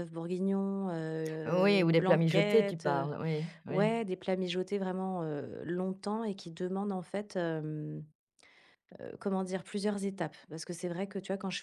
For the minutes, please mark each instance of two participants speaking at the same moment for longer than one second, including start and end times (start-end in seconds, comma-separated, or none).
1.5-3.1